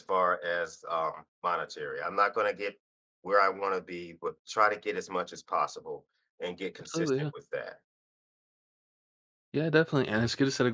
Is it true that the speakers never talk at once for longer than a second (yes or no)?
yes